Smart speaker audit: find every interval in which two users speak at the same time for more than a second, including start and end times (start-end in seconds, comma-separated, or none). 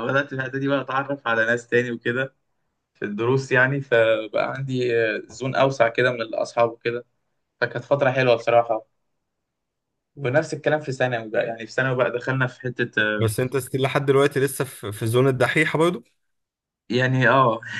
none